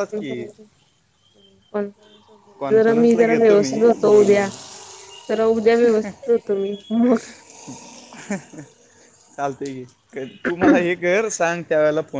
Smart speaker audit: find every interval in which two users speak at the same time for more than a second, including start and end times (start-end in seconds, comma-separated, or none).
2.6-4.5